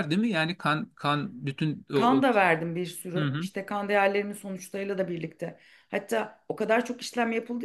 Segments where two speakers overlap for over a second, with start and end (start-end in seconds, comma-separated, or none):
none